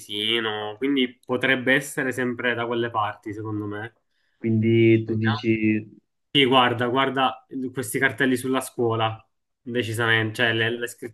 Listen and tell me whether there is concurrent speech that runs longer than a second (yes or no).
no